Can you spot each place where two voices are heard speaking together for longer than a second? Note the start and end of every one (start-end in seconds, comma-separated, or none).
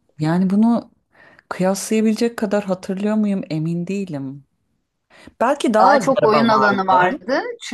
5.8-7.2